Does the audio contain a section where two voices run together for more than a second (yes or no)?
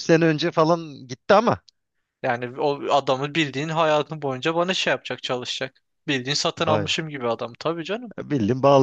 no